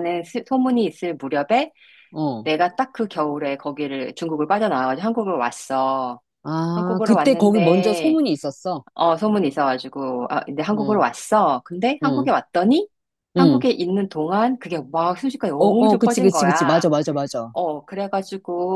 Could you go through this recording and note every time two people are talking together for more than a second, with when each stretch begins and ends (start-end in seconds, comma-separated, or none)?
6.7-8.2, 15.6-16.8